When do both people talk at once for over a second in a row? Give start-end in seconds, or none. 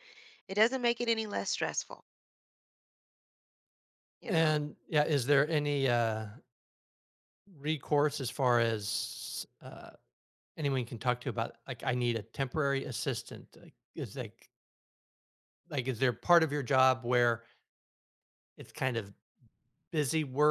none